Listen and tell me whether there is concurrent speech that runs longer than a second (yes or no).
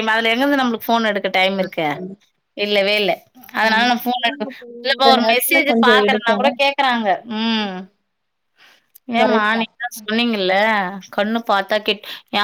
yes